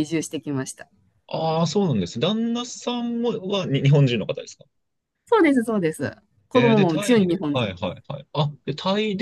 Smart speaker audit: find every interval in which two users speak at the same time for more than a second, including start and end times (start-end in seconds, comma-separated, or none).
6.5-7.7